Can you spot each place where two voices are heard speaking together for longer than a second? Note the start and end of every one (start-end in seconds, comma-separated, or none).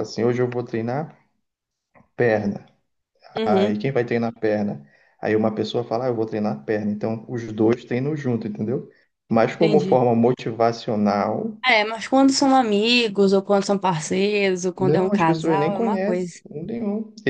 14.8-16.3